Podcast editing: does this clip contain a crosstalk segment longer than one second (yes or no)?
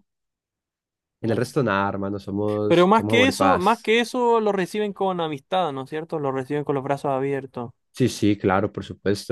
yes